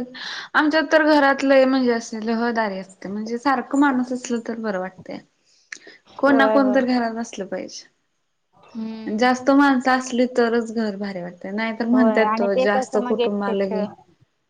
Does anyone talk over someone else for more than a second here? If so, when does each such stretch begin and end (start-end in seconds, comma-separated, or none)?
11.9-13.8